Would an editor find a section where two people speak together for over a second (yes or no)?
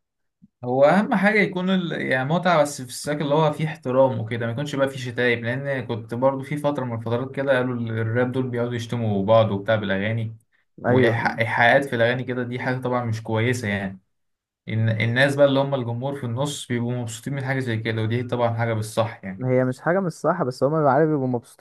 no